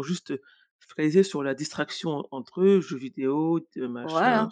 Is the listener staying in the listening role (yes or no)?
no